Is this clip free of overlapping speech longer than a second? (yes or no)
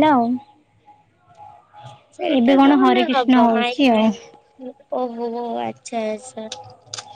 no